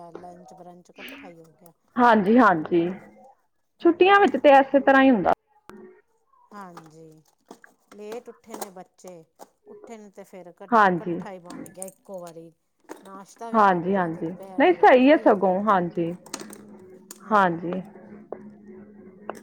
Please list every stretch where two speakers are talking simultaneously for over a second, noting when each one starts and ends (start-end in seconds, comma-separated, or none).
13.6-15.6